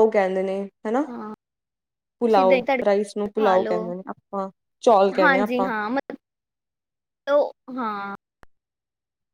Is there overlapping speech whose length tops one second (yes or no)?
yes